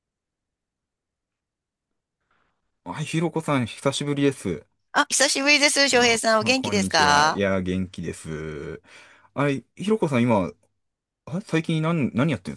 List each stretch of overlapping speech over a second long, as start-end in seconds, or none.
5.9-7.4